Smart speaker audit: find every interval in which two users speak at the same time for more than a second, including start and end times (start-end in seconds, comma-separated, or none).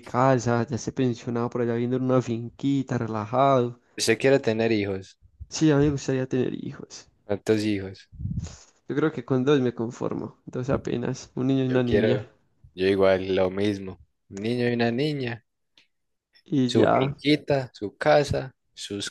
none